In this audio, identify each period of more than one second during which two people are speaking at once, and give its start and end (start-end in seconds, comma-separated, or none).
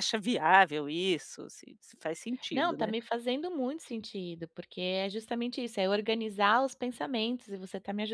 none